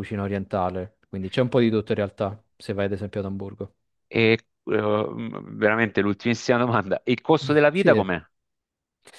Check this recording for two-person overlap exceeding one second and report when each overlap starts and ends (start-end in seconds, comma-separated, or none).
none